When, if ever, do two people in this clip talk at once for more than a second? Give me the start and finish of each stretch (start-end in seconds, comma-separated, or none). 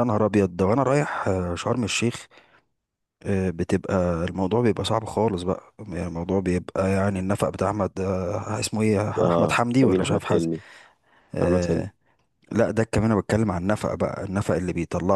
9.2-10.5